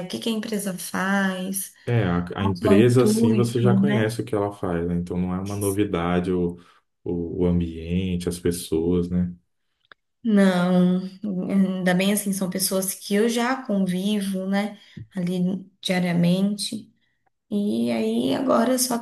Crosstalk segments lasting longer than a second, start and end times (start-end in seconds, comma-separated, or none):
2.4-4.2